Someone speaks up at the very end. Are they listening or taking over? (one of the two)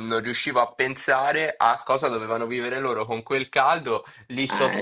listening